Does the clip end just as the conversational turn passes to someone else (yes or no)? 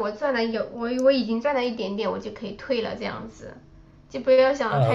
yes